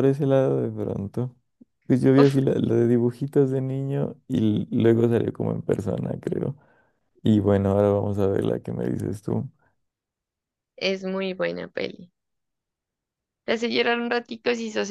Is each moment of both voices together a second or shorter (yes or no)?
yes